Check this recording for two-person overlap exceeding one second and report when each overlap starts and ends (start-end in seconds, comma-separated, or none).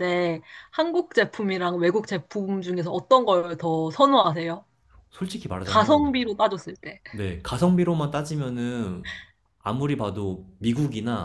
none